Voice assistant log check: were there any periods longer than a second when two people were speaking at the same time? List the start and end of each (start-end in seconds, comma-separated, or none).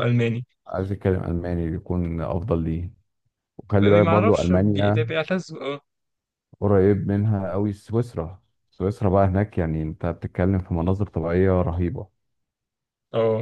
3.8-5.0